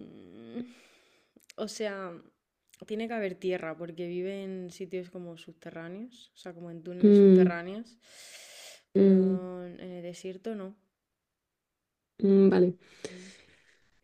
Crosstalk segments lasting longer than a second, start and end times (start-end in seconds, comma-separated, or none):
none